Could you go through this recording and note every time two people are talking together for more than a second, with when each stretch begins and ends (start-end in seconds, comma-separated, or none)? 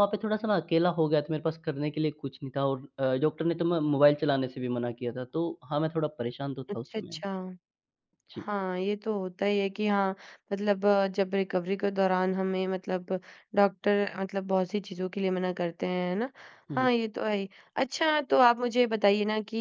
none